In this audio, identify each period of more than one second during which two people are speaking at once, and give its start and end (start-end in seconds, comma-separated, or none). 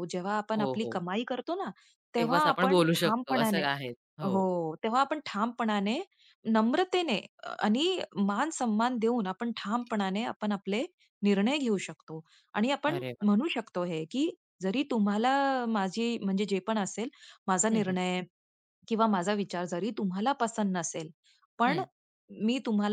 2.2-3.6